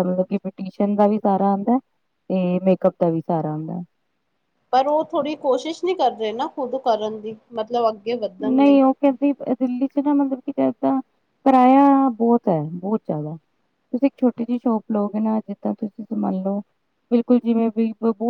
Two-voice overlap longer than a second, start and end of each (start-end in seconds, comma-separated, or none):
none